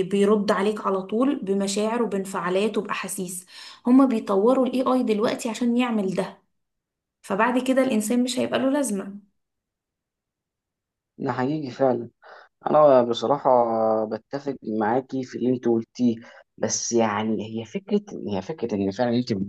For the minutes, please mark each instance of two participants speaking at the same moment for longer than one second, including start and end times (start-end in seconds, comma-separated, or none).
none